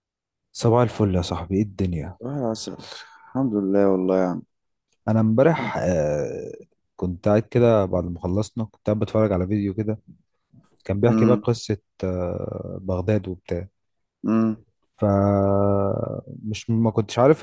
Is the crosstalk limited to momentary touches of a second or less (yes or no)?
yes